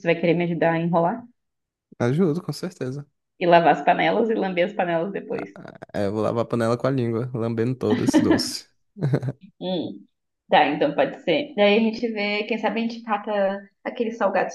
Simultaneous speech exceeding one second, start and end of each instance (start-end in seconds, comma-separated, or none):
none